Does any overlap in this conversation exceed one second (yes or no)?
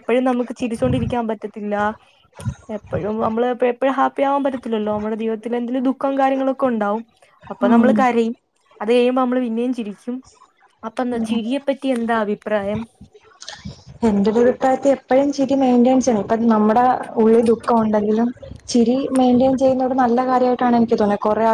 no